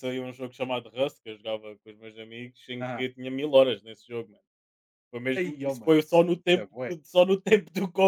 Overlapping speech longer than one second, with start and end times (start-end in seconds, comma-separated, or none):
5.4-7.0